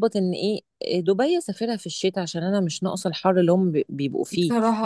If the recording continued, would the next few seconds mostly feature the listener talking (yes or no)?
no